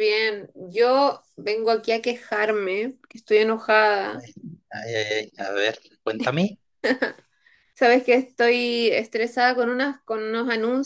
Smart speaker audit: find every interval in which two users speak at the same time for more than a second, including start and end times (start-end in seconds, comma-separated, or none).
none